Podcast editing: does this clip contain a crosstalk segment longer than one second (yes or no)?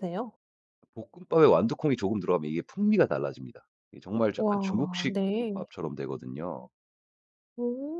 yes